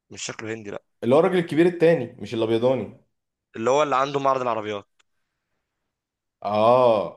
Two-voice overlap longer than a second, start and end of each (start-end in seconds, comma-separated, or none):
none